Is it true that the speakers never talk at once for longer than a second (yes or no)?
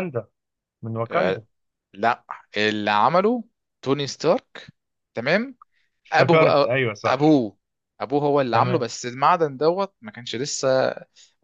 no